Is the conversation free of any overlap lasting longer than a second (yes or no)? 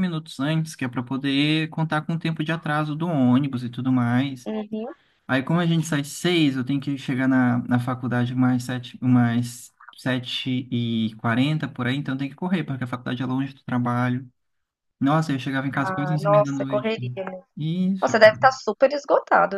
no